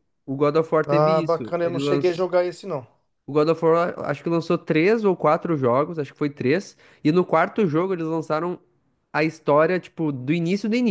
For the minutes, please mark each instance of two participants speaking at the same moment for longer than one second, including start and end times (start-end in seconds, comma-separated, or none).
0.8-2.3